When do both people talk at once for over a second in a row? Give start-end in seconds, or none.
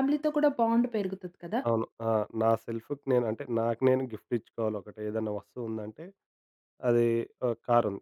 none